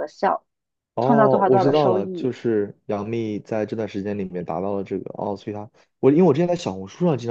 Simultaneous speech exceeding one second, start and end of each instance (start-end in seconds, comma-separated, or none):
1.0-2.4